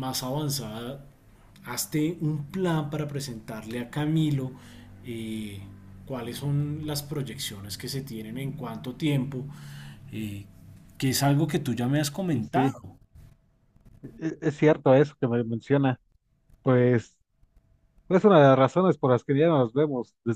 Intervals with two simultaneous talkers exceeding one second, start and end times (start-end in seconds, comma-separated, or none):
none